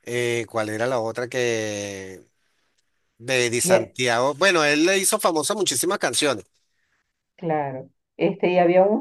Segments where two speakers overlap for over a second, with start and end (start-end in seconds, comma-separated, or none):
none